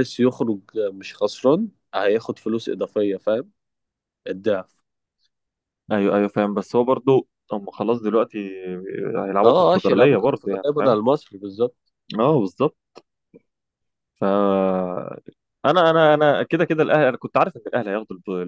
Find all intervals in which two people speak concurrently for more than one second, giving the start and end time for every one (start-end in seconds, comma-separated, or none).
9.4-11.0